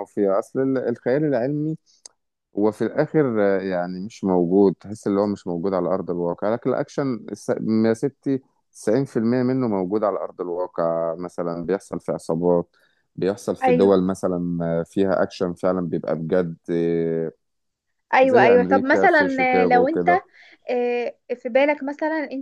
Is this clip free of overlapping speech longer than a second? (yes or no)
no